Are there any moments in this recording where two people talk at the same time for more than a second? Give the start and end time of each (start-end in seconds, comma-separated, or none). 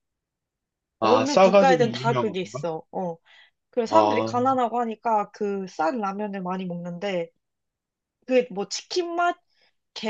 1.0-2.6